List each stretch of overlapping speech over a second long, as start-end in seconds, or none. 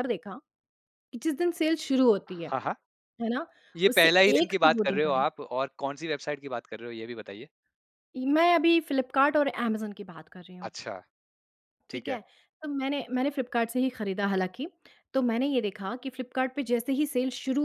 3.8-5.2